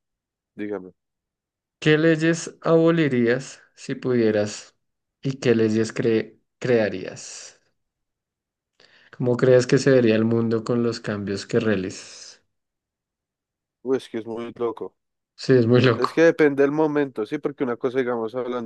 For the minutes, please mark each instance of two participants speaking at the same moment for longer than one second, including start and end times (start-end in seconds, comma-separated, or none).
none